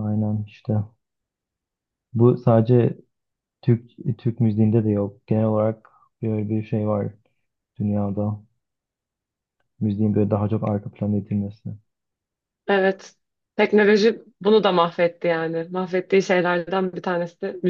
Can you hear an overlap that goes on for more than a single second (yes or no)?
no